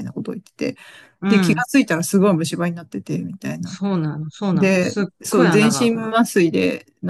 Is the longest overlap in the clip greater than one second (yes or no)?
yes